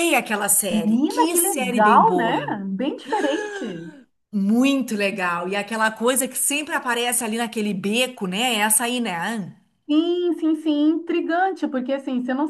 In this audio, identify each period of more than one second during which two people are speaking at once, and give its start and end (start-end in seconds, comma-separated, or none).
0.7-2.6